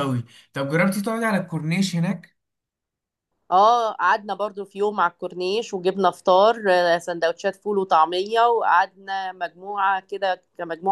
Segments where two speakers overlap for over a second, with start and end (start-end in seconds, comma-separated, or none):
none